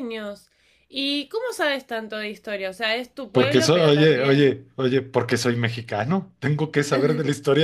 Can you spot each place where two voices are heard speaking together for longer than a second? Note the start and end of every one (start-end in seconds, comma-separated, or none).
3.3-4.6